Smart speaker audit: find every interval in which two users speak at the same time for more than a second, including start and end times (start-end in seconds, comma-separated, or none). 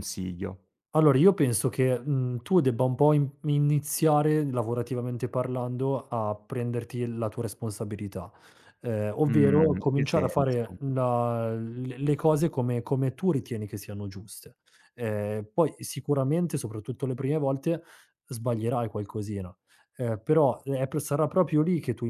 9.2-10.6